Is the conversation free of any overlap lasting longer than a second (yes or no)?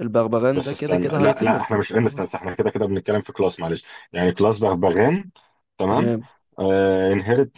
no